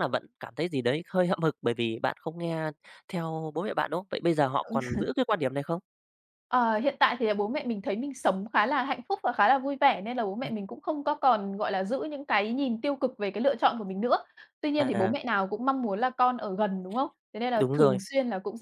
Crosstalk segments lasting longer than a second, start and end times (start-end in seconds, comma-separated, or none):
none